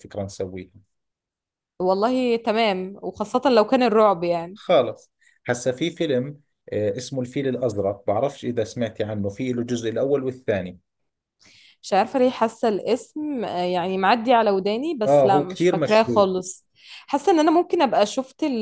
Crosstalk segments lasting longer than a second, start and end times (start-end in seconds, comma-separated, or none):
15.1-16.3